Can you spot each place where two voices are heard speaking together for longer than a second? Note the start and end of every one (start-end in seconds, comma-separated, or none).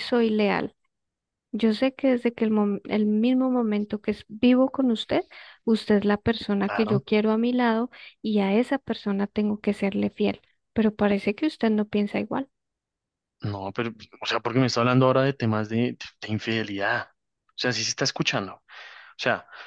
none